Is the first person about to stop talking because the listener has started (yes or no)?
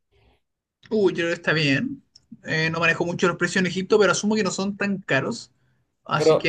yes